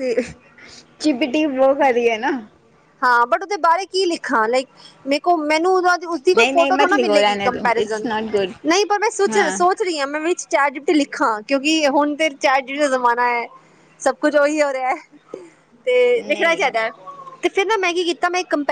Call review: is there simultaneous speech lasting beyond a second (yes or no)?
yes